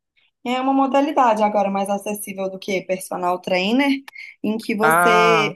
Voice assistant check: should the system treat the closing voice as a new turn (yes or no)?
no